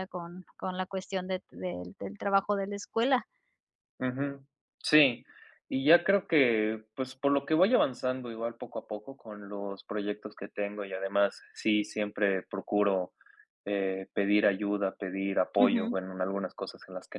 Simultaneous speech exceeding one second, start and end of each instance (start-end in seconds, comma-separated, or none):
none